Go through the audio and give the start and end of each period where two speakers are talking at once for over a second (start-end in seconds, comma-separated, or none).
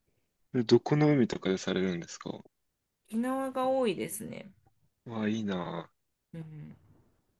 none